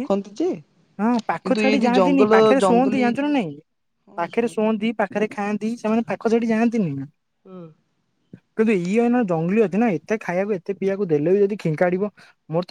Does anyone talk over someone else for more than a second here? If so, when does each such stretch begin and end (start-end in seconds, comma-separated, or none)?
1.4-3.5